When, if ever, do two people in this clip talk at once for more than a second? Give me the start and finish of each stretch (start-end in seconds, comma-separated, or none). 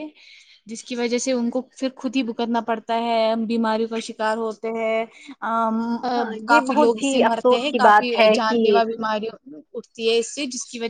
6.5-8.7